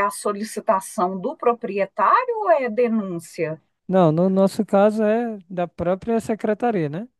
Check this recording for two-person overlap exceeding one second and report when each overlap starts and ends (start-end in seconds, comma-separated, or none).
none